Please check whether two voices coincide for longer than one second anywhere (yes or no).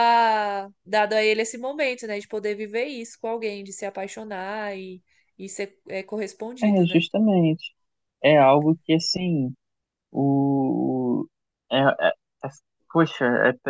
no